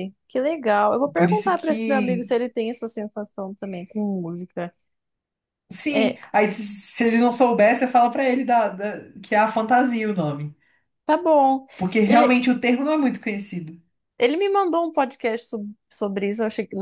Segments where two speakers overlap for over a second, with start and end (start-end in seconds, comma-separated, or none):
1.1-2.4